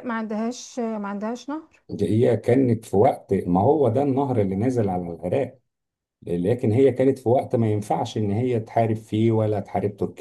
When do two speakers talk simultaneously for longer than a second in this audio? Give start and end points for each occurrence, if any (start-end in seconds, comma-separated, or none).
none